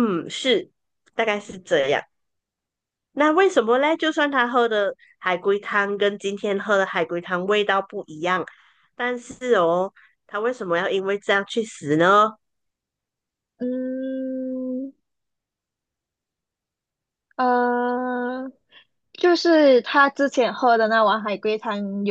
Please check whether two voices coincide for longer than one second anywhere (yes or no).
no